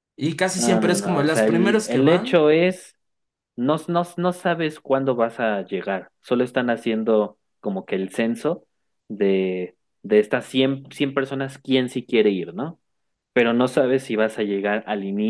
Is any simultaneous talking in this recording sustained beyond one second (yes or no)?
yes